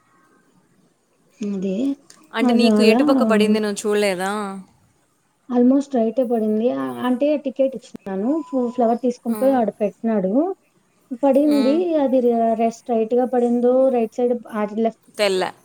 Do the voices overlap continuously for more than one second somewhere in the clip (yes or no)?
no